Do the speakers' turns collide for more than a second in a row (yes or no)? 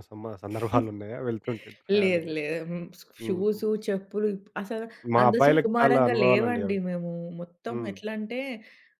yes